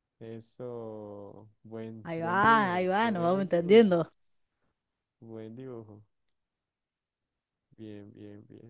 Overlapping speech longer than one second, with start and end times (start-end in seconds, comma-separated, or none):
2.0-4.1